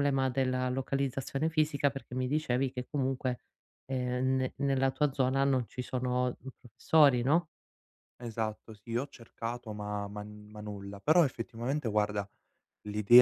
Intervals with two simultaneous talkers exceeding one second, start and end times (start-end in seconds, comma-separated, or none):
none